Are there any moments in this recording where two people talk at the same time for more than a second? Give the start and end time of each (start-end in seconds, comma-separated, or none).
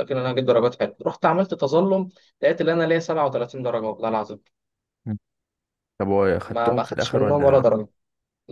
6.5-7.7